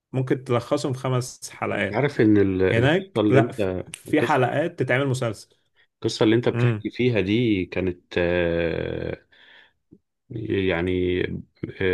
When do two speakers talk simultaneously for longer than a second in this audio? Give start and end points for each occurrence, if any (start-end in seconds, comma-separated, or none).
2.7-4.4